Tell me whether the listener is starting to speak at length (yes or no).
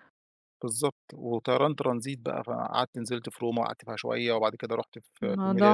yes